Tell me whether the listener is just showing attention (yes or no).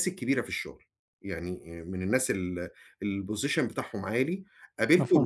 yes